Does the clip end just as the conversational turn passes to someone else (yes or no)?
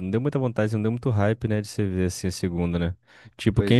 no